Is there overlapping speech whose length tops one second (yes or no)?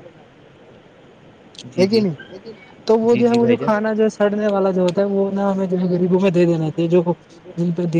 yes